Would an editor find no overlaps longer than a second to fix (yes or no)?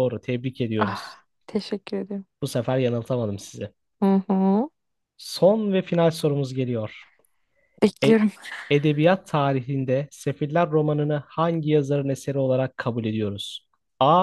yes